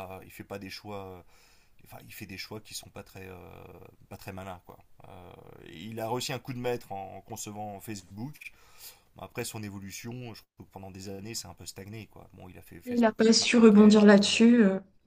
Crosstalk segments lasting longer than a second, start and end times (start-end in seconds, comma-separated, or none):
12.9-14.4